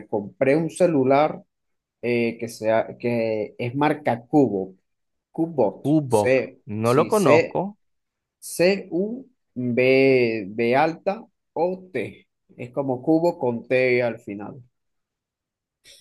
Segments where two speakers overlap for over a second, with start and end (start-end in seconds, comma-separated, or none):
5.8-7.6